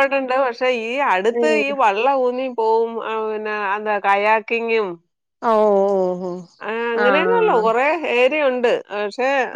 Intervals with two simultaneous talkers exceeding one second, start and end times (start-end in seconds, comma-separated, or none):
none